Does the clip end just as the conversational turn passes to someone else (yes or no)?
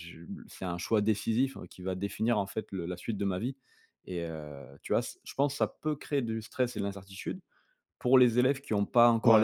yes